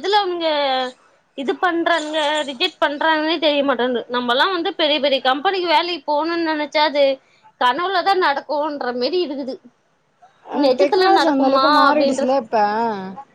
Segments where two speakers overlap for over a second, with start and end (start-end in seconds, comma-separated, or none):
10.6-12.3